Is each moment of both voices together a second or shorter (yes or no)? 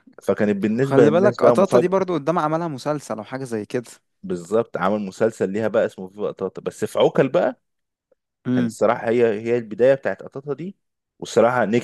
no